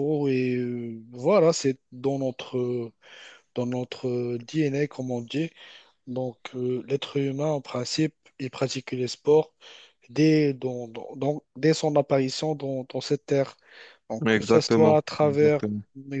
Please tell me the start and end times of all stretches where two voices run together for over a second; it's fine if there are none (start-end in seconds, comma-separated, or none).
14.2-15.6